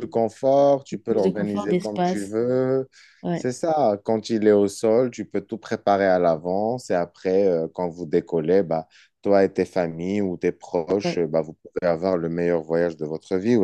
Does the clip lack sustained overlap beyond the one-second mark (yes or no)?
no